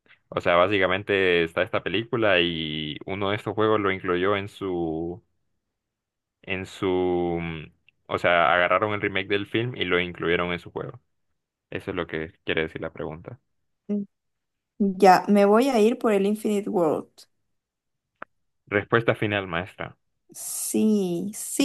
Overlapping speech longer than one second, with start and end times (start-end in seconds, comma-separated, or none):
none